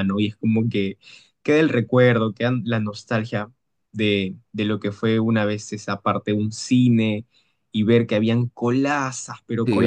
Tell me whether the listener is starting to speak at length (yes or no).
yes